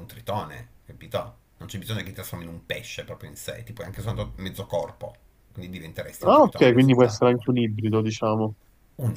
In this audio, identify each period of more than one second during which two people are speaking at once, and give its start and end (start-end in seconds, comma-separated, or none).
6.2-7.5